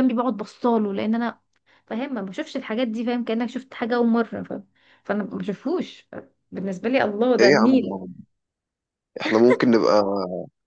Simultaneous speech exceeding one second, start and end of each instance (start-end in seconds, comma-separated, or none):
none